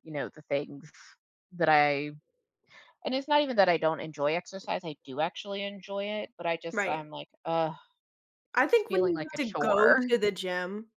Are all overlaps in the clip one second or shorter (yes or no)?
no